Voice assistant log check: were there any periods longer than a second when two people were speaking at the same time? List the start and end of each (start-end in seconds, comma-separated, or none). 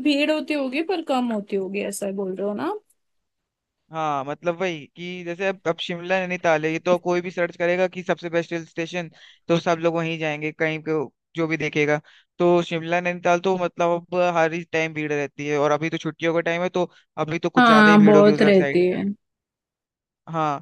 17.6-18.8